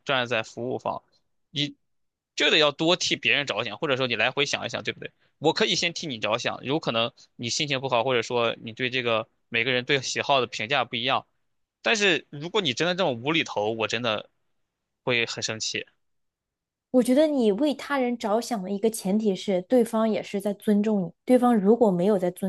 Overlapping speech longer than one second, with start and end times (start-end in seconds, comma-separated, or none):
none